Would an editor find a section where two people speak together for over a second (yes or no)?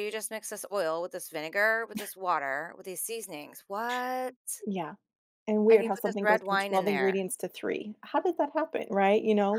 yes